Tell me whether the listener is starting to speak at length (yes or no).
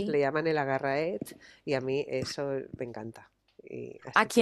yes